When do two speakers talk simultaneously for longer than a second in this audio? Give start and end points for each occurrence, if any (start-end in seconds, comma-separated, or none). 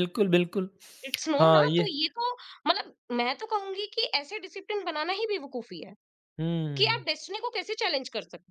none